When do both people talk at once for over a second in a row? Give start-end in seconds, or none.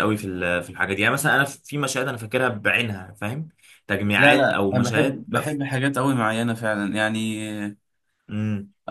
4.2-5.6